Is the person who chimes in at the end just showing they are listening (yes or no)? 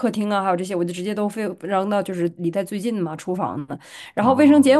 yes